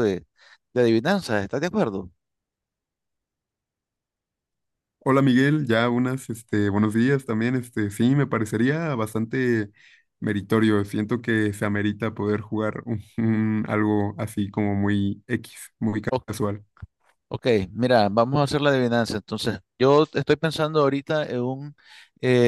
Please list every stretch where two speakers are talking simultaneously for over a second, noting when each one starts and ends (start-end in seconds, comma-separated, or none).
none